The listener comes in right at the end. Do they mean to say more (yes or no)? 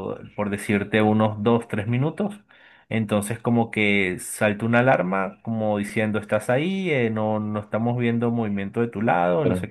no